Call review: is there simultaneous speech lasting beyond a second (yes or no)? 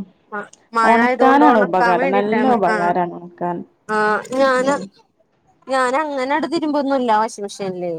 yes